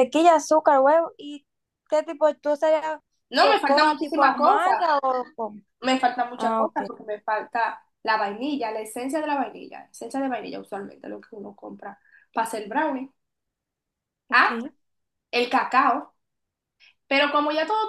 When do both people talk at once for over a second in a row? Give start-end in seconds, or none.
3.4-4.9